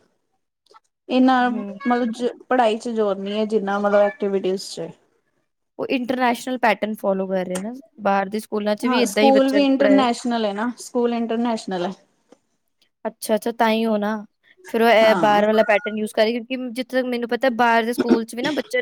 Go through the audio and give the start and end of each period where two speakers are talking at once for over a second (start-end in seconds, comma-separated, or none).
none